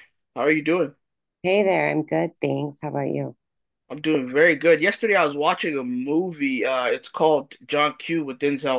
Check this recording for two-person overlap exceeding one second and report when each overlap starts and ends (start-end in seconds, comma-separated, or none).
none